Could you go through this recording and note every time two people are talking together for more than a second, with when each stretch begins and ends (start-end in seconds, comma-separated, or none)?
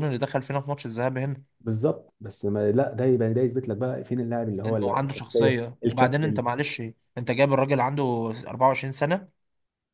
4.7-6.4